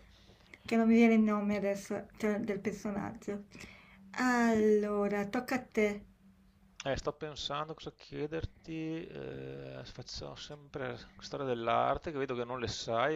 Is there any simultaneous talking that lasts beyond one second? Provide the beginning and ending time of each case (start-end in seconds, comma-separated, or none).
none